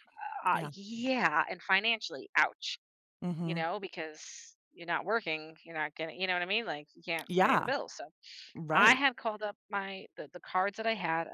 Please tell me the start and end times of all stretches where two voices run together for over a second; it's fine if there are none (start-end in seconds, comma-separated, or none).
none